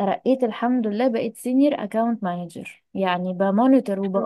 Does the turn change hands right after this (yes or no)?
no